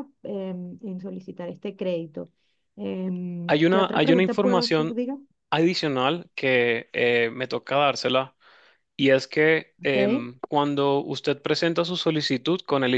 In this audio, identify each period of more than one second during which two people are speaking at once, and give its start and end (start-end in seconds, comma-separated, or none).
3.5-5.0